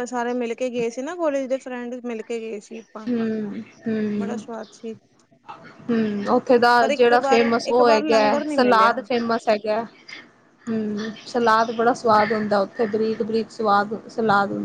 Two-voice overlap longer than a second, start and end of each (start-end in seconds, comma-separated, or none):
6.8-8.9